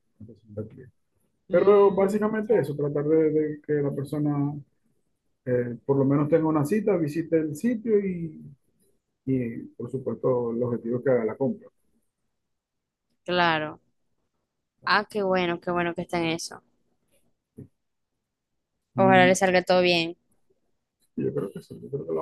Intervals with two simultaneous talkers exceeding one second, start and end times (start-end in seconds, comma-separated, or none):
1.5-2.7